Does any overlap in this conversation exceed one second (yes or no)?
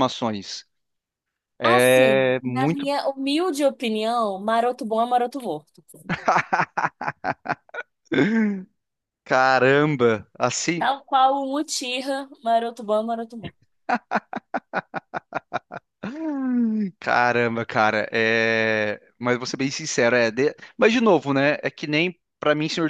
yes